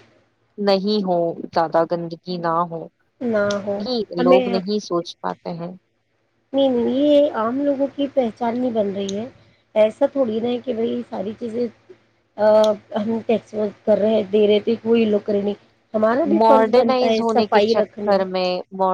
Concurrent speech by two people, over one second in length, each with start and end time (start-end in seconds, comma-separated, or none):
16.4-18.1